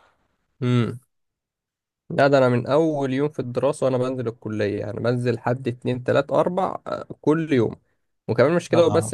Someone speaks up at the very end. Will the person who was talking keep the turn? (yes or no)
yes